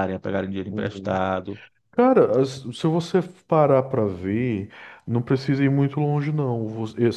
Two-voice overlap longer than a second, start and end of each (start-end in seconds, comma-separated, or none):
none